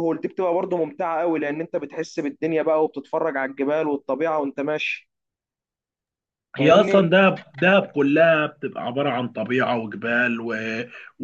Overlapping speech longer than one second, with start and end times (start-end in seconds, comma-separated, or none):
none